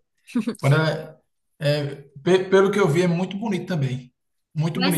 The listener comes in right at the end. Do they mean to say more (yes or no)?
yes